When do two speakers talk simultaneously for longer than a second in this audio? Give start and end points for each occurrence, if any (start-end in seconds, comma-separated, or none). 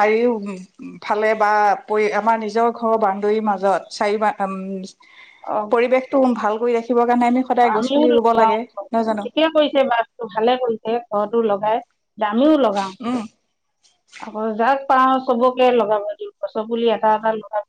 none